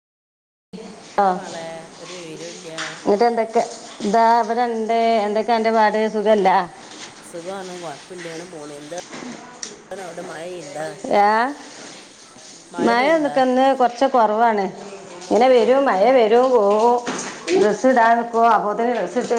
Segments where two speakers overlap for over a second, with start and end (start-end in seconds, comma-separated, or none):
none